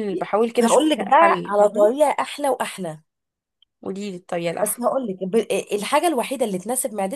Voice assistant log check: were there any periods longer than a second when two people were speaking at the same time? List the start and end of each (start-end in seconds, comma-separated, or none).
0.6-1.9